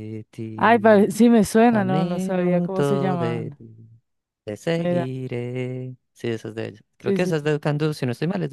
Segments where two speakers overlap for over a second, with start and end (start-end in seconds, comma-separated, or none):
1.7-3.6